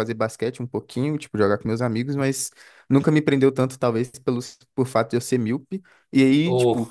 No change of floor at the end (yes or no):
yes